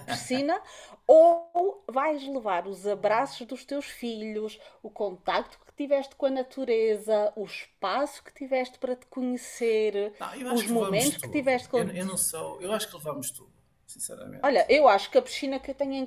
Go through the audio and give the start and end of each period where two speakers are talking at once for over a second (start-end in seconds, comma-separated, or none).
10.5-12.1